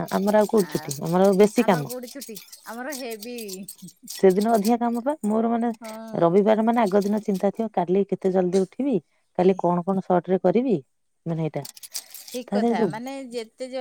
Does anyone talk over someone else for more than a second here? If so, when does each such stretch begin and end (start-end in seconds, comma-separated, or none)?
none